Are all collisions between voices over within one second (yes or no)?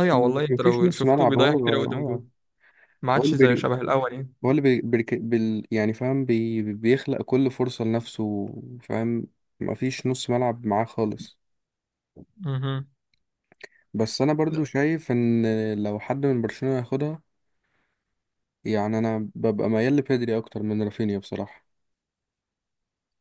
no